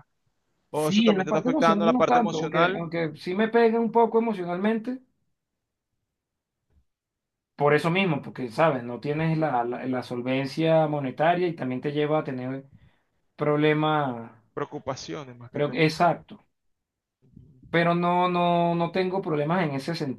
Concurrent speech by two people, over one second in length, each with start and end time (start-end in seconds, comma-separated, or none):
0.8-2.9